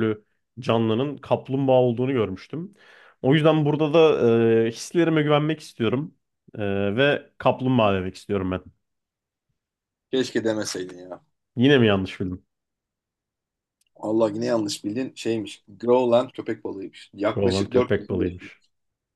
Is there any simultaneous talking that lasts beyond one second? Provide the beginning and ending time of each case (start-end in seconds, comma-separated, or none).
17.3-18.5